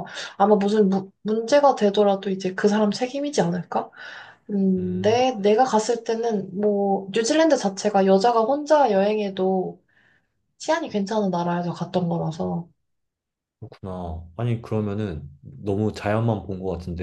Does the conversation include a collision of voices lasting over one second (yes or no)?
no